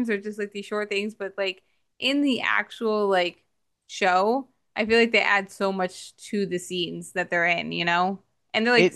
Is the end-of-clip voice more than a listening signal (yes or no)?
yes